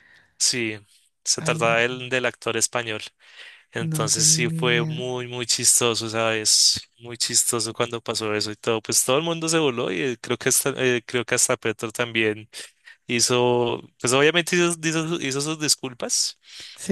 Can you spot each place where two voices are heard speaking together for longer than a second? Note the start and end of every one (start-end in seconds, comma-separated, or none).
3.8-5.0